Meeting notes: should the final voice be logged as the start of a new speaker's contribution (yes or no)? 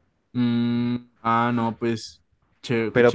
yes